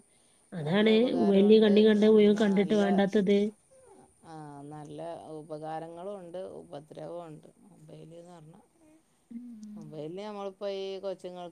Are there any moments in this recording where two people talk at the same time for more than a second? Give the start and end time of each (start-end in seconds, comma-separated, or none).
0.6-2.8